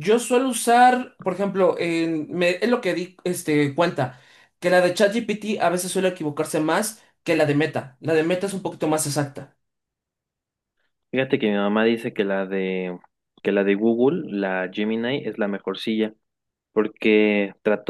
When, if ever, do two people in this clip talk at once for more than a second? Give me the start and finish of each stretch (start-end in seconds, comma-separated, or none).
none